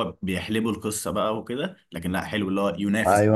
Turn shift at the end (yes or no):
yes